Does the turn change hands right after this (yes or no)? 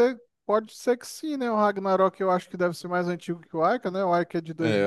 yes